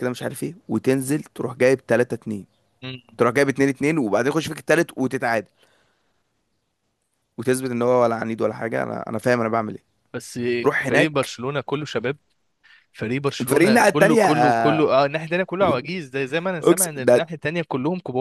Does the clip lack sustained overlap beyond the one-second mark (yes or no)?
no